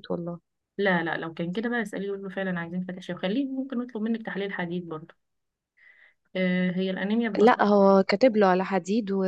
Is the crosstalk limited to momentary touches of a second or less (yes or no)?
yes